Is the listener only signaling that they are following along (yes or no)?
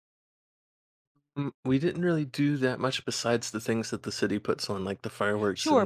no